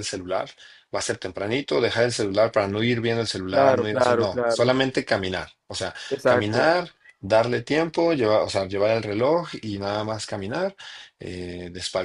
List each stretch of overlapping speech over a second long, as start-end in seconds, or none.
3.5-4.7